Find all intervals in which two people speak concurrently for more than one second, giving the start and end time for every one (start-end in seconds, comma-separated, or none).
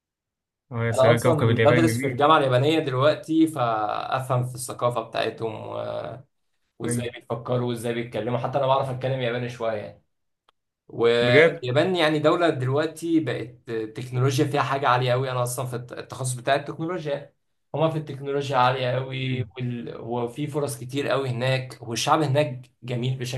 0.9-2.2